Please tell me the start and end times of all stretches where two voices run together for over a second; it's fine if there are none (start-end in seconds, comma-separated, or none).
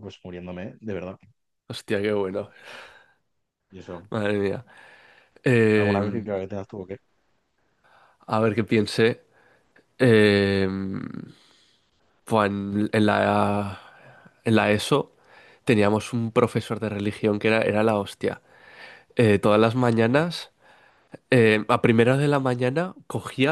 none